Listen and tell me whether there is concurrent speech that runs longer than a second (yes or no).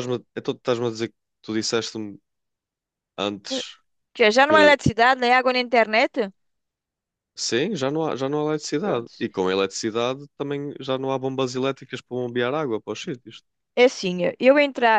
no